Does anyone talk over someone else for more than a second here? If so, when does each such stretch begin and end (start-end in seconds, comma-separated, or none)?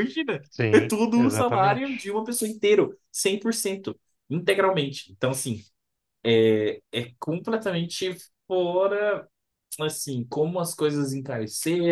0.5-2.1